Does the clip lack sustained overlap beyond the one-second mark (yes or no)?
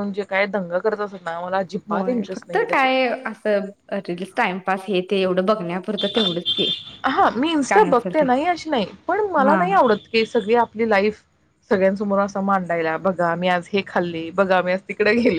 yes